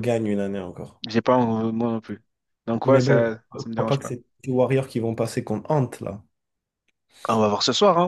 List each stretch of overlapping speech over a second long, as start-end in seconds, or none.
2.9-4.1